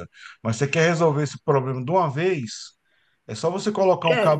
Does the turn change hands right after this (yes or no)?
no